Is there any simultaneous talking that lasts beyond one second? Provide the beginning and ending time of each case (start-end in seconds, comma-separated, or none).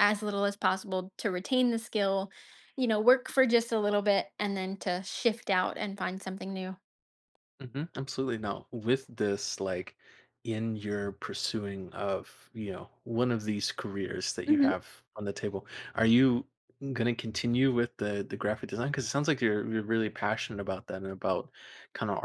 none